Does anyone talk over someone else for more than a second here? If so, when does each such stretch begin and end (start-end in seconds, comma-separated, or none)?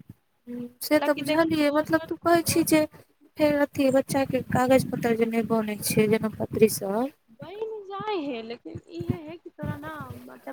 0.9-3.3